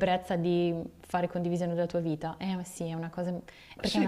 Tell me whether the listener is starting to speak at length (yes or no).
yes